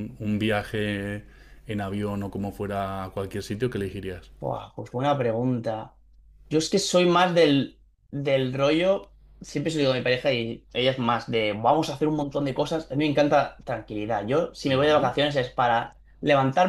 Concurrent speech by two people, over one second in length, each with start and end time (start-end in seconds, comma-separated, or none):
none